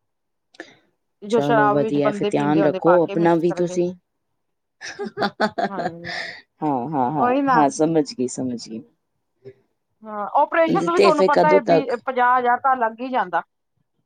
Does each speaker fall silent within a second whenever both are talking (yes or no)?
no